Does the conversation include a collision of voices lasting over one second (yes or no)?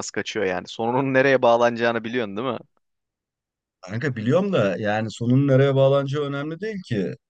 no